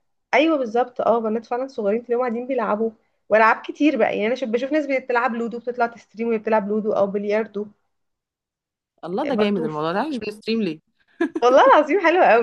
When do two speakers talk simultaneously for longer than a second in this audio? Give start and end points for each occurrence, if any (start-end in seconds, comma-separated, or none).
none